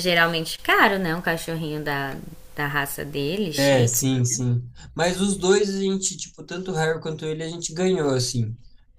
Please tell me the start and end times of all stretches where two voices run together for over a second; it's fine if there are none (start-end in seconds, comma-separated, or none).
none